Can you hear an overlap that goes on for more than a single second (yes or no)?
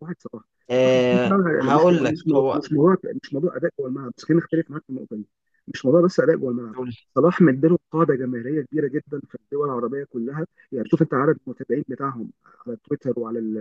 yes